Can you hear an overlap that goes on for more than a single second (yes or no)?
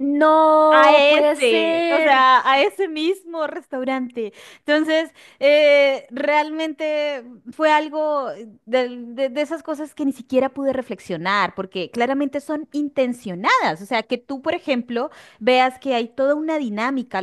yes